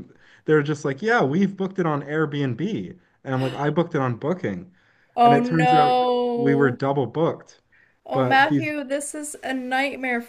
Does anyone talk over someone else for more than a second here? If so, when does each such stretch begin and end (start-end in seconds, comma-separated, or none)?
5.2-6.8